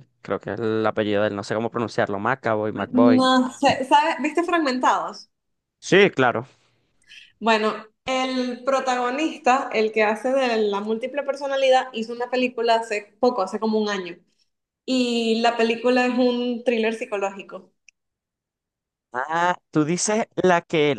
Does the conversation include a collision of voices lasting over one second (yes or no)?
no